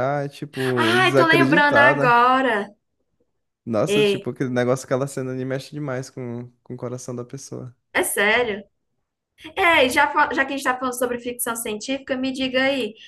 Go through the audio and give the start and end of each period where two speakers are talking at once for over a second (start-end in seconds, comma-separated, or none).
0.8-2.2